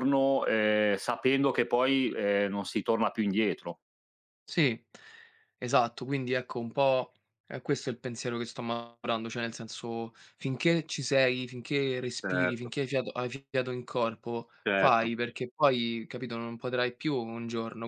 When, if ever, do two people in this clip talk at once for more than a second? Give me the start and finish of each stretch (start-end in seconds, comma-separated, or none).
none